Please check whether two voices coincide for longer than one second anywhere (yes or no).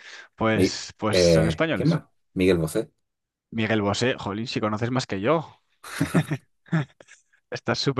yes